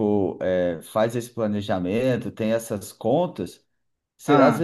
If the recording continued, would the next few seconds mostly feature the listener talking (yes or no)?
no